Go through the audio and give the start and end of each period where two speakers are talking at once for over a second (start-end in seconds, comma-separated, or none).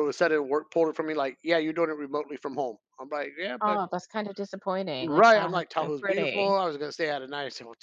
5.0-6.6